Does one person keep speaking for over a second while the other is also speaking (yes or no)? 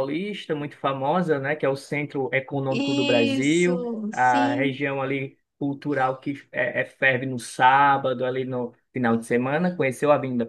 yes